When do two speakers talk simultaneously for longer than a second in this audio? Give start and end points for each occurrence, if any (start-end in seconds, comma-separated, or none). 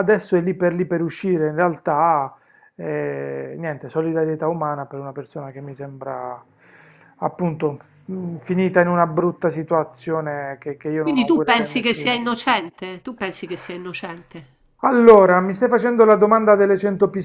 11.0-12.3